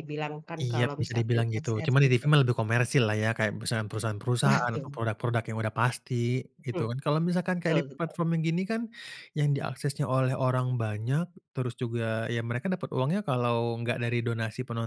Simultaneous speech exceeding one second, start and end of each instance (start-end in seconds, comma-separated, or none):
0.6-2.2